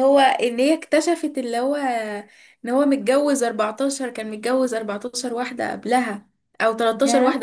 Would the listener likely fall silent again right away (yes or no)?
yes